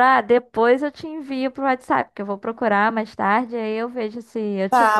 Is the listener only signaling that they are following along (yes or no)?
no